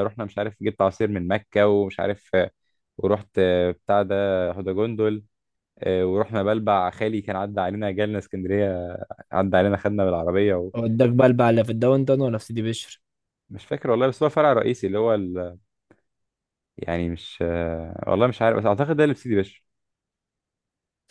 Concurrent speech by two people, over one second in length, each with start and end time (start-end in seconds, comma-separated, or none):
none